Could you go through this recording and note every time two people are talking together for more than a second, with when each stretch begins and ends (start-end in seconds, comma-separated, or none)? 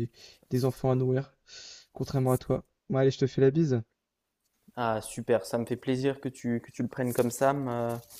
none